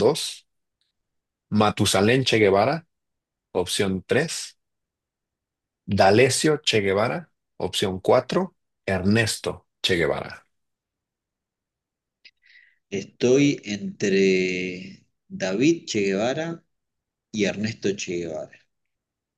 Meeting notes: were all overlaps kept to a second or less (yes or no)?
yes